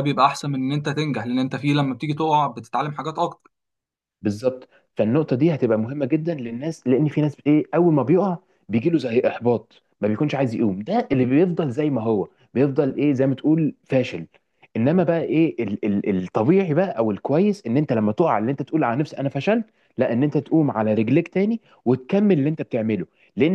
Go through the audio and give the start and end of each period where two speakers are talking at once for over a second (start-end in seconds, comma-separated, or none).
none